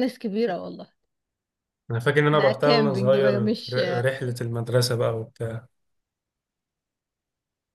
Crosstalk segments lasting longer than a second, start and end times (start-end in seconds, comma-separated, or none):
2.3-3.8